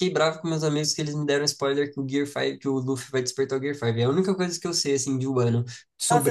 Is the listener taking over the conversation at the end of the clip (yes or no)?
yes